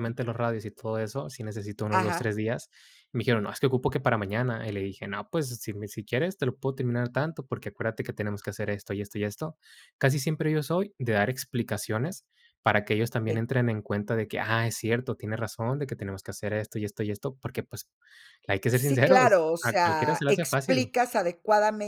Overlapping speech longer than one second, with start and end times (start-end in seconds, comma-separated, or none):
18.7-20.9